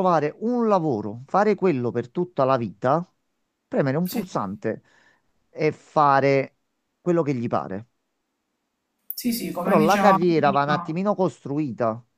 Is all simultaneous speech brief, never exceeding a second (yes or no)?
no